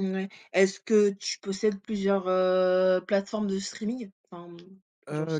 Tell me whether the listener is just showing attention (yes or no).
no